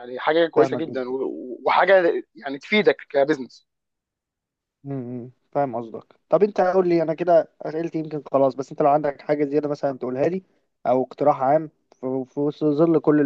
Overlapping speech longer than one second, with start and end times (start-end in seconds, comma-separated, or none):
none